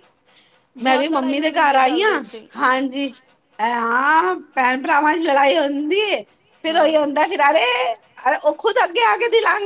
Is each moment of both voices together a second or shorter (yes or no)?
no